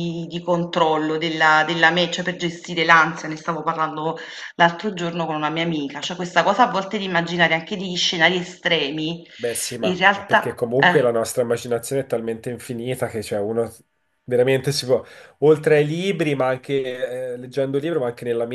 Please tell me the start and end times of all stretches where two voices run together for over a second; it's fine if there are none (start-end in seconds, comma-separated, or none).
9.8-11.1